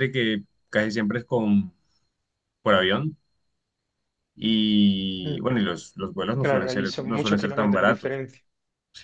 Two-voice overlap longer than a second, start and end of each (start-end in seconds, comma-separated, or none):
6.4-8.2